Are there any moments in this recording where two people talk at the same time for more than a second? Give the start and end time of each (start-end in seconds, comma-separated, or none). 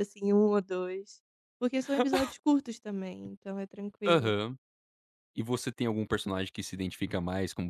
none